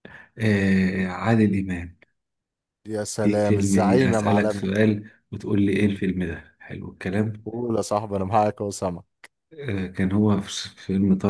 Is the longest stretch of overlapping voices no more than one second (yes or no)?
no